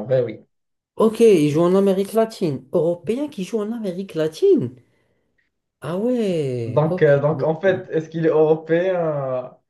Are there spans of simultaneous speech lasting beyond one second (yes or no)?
yes